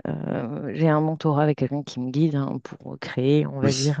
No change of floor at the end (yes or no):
yes